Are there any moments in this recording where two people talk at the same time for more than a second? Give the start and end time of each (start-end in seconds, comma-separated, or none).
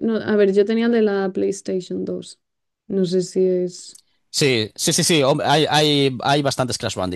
none